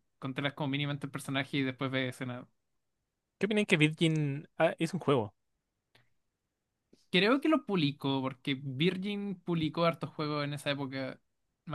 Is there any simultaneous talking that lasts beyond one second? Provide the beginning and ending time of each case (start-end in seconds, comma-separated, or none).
none